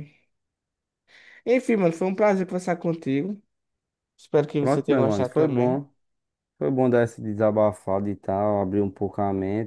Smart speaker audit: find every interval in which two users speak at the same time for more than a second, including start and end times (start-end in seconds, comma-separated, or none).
4.6-5.8